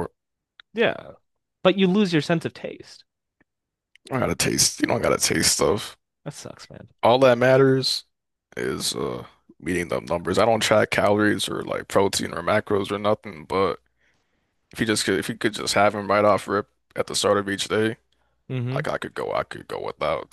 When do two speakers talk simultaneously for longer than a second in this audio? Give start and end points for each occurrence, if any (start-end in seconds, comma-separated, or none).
none